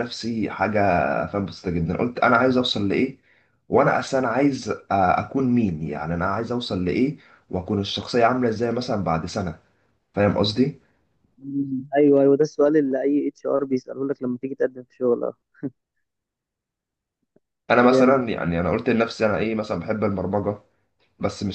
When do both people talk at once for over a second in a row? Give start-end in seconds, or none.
none